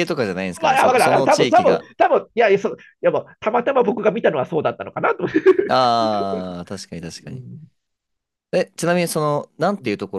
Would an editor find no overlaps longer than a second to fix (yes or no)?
no